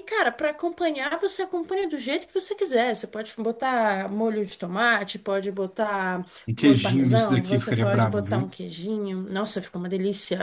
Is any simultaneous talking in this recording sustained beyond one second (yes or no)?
yes